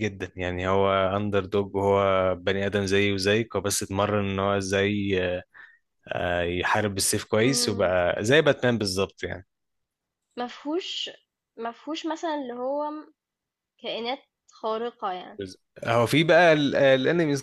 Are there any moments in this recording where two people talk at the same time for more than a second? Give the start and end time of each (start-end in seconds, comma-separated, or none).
none